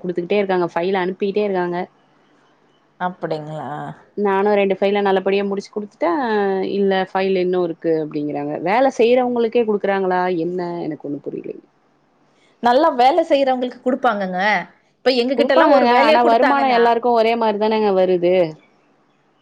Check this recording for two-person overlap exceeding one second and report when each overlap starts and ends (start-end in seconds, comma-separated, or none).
15.4-16.8